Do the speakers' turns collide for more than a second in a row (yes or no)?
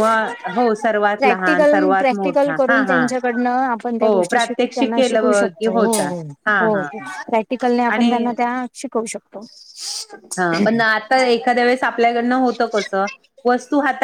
yes